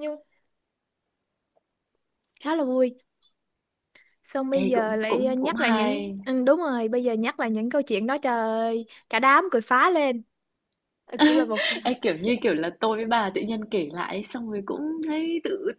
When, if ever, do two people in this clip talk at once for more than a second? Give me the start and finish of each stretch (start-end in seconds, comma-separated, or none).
4.5-6.2